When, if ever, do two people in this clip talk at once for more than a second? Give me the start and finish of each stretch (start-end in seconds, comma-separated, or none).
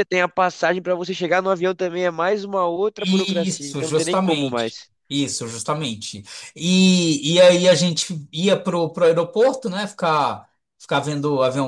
3.0-4.9